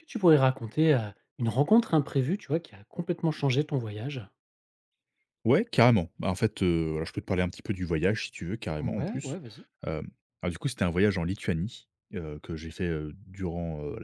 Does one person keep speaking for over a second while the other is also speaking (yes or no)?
no